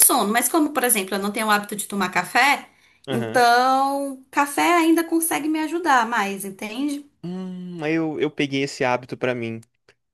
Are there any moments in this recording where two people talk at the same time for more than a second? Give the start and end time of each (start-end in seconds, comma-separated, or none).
none